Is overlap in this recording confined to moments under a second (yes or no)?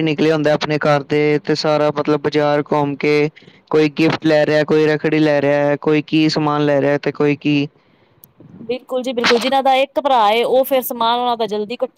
yes